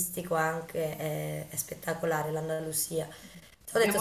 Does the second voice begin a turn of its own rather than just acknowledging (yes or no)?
no